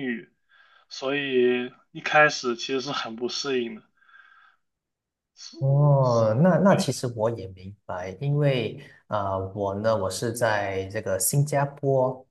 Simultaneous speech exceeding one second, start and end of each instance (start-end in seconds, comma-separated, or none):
none